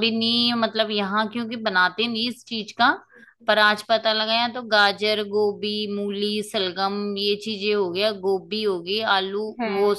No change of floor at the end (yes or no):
yes